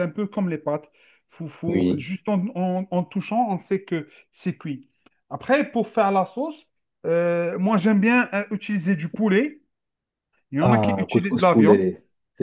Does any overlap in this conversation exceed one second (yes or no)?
yes